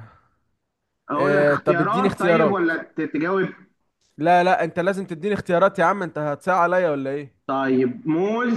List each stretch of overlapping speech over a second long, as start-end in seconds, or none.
1.1-2.7